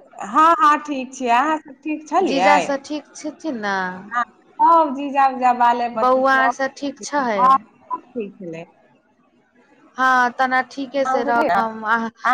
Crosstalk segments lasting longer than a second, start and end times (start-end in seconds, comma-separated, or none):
6.0-7.4